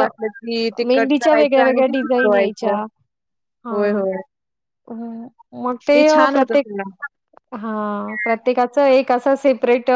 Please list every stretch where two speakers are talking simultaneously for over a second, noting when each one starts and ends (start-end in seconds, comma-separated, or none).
0.9-2.7